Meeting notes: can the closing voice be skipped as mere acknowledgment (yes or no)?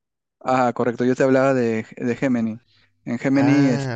yes